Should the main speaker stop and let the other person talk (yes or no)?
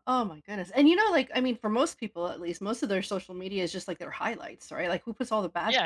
yes